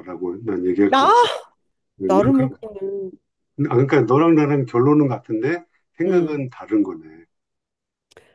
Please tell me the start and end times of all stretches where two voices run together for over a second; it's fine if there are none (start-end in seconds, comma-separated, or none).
none